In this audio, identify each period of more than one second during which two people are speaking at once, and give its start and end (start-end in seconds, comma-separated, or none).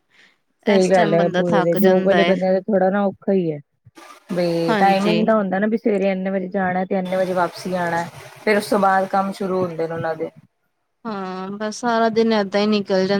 0.8-2.3